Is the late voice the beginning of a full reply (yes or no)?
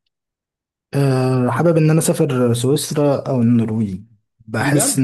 no